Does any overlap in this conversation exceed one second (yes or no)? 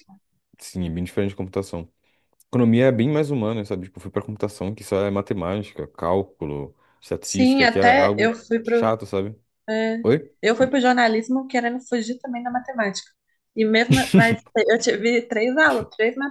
yes